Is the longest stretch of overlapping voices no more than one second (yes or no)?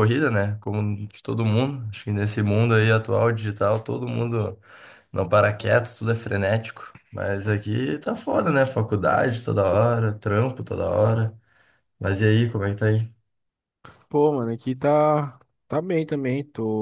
yes